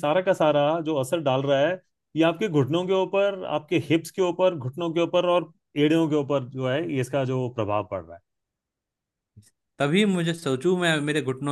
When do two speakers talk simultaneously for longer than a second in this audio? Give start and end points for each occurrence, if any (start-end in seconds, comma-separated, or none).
none